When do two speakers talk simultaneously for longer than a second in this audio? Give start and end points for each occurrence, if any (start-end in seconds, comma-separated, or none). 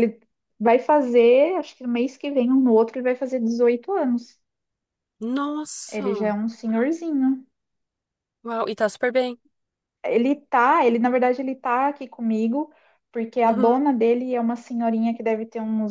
none